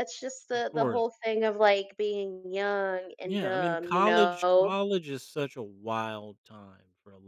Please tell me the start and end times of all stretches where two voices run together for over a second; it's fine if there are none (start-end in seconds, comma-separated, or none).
3.2-4.8